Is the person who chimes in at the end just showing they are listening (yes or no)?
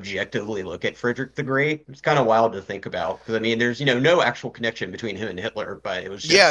no